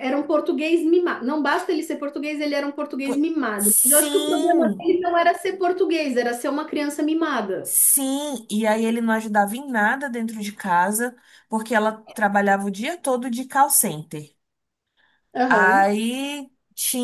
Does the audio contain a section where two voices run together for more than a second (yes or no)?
yes